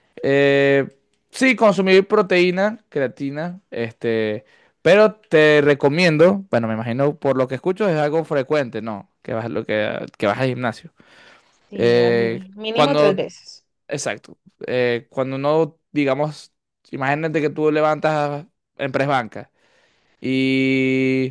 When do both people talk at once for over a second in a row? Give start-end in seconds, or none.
11.7-13.2